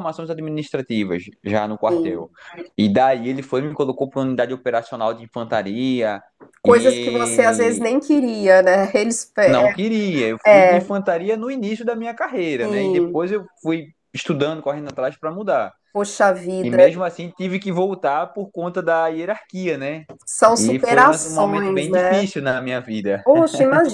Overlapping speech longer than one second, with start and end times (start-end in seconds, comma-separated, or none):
6.6-7.9, 20.6-22.2